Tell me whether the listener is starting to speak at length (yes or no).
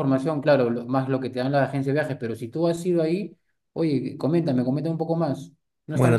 yes